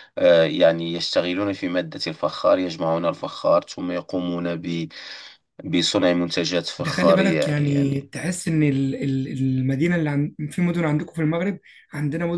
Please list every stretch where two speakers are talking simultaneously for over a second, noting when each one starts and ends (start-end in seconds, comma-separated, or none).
6.8-8.1